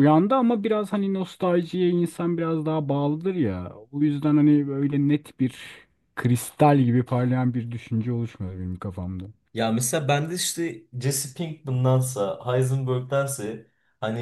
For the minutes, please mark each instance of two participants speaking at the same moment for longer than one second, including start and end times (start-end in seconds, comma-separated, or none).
none